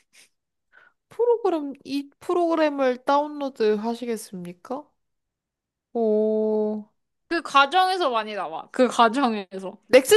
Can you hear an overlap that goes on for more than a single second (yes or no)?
no